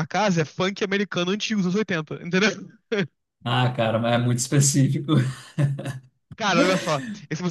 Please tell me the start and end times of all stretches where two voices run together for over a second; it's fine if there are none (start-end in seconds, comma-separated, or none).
none